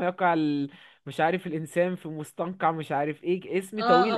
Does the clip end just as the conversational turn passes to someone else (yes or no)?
yes